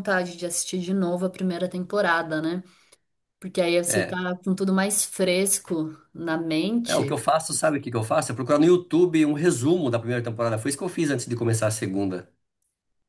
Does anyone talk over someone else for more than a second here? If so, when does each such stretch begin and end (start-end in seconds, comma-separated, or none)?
none